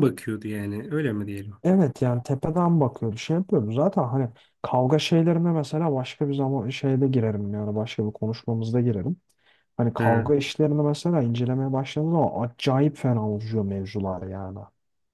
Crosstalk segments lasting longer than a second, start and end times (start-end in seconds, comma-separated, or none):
none